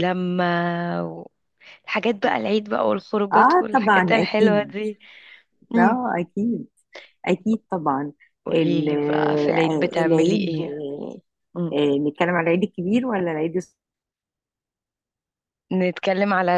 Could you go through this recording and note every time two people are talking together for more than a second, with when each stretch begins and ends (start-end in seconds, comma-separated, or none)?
3.3-4.7, 9.5-10.8